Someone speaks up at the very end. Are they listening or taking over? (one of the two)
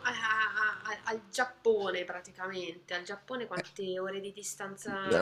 taking over